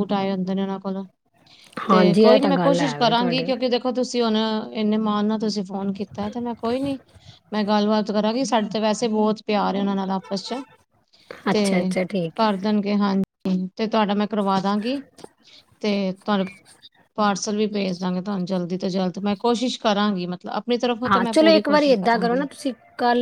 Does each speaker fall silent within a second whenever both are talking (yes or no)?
no